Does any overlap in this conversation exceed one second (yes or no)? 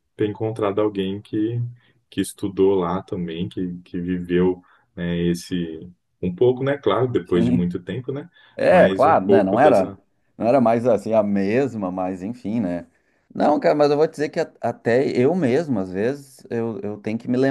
yes